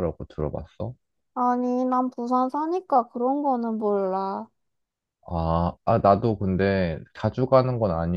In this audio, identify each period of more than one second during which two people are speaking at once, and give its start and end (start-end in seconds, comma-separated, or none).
none